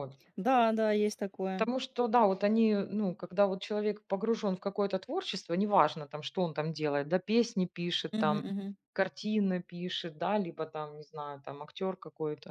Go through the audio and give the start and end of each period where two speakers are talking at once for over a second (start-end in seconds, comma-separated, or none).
none